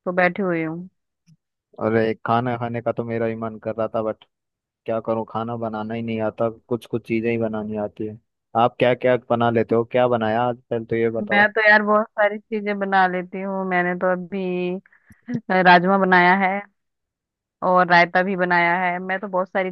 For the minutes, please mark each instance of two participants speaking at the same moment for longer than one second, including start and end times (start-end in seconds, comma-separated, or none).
none